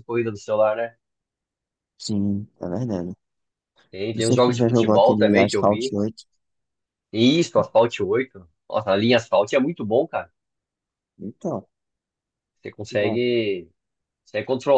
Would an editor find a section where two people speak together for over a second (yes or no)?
yes